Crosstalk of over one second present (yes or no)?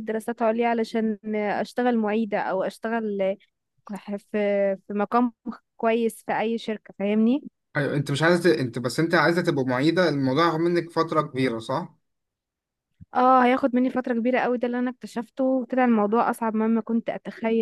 no